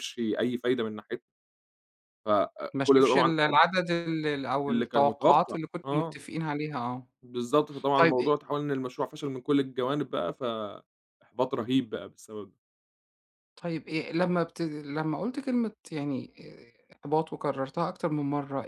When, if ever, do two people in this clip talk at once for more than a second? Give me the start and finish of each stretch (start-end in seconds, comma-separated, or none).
4.7-6.2